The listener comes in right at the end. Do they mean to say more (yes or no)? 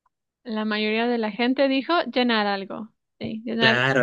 yes